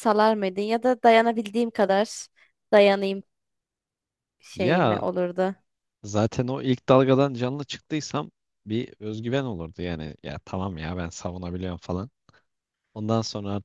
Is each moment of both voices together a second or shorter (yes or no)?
yes